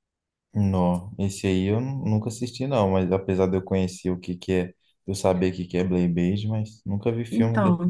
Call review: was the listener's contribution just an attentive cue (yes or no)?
no